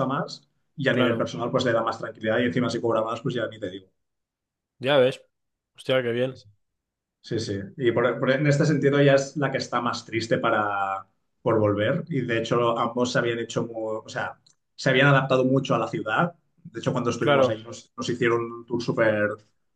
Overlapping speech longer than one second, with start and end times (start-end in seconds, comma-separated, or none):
none